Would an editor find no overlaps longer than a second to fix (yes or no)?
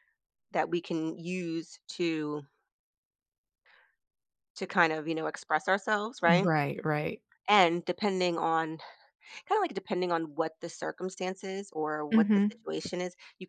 yes